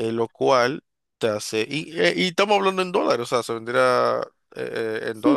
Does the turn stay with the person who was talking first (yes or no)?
no